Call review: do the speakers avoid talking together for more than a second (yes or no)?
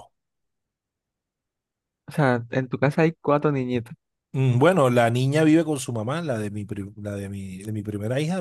yes